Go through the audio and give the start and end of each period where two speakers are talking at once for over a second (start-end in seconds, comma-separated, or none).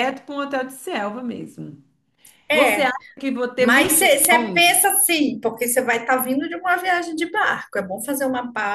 3.6-4.8